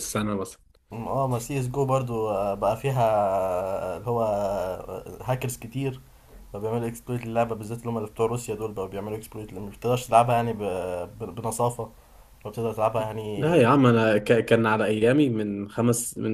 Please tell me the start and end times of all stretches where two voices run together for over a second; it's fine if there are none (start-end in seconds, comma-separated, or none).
none